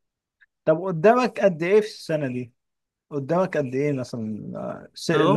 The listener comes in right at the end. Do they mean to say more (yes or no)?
yes